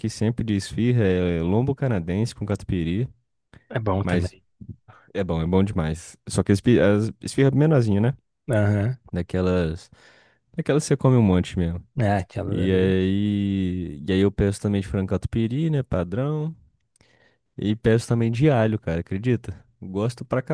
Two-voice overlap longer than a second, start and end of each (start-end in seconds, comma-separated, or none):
none